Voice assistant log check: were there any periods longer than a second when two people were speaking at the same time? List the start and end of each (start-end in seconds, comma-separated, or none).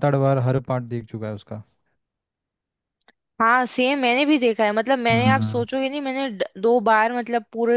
none